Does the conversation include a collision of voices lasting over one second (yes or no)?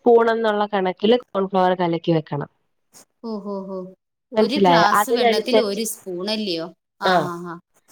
yes